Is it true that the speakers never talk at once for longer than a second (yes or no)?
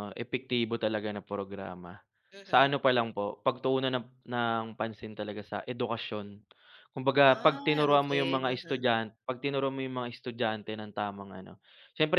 no